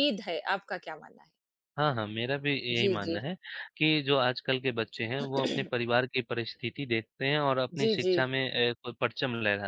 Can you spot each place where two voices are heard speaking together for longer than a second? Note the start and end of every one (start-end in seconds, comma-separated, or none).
none